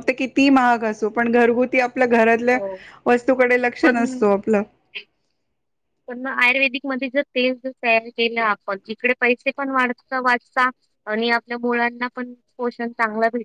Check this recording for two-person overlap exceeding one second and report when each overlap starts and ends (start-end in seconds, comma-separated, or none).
none